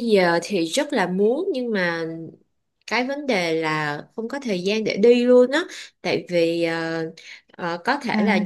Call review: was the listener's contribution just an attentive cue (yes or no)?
yes